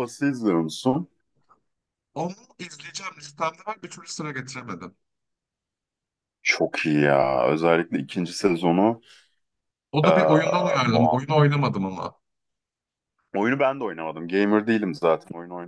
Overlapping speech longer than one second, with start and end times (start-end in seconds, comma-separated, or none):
10.0-11.4